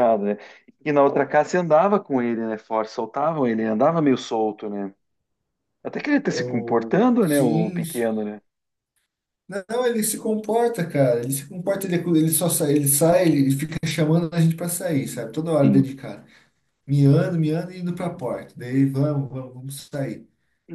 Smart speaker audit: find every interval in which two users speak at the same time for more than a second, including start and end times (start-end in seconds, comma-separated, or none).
6.2-8.1